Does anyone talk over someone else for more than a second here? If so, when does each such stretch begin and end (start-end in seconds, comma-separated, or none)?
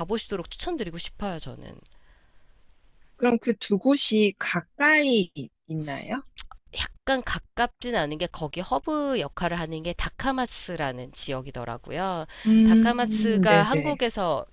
12.6-14.0